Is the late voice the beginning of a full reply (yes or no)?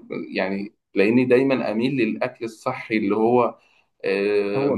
yes